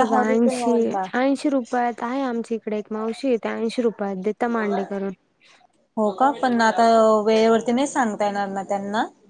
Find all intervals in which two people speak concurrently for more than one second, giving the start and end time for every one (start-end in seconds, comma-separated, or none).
none